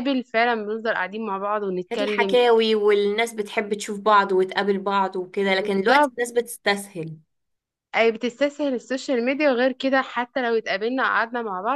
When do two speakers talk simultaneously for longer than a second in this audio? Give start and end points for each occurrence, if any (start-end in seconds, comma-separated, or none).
none